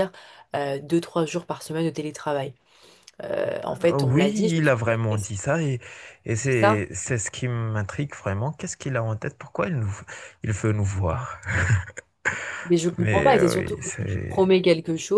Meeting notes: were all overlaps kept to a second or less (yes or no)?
no